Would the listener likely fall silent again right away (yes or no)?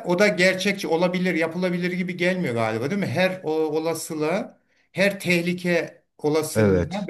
yes